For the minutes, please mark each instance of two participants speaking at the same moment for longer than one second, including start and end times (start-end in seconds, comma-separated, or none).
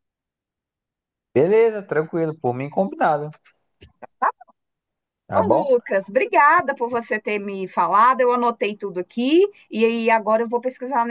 none